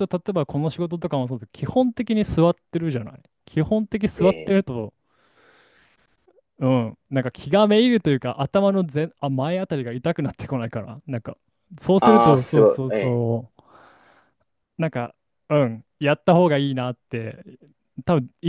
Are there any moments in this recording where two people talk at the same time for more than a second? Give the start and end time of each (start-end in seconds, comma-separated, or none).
12.0-13.2